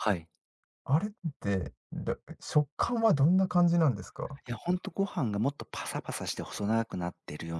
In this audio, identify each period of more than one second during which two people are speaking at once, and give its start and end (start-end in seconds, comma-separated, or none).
none